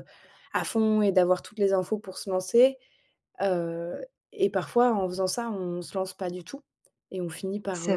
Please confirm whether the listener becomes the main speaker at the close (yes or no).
no